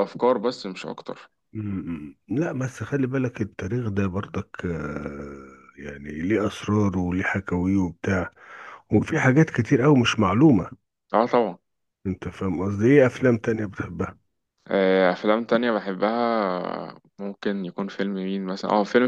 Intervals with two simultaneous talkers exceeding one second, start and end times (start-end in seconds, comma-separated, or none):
none